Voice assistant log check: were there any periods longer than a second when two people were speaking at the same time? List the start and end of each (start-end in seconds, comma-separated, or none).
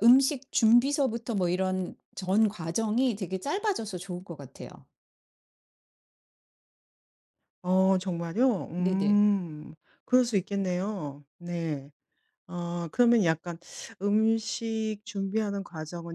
none